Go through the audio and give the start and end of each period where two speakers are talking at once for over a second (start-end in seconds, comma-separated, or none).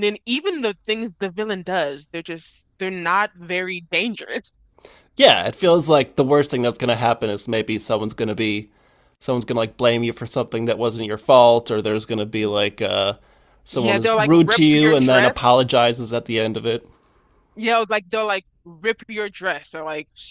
13.7-15.5